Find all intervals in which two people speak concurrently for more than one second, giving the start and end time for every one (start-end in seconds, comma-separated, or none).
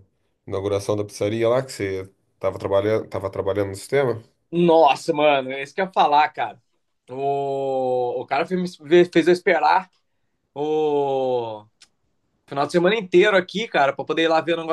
none